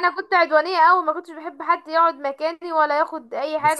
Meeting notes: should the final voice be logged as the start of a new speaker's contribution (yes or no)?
no